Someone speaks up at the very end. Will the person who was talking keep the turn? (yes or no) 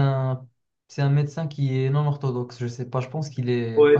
no